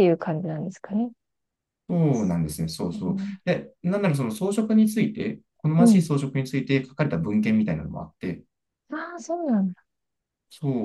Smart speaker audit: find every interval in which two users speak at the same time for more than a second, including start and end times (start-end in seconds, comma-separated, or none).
none